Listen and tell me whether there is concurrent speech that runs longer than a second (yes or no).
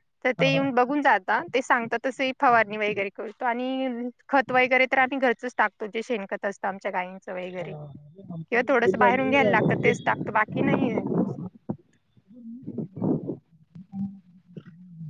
yes